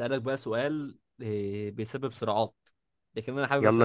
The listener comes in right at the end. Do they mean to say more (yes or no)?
no